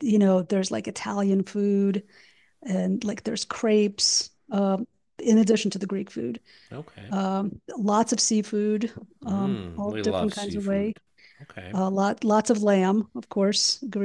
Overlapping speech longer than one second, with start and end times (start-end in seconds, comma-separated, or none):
9.3-11.0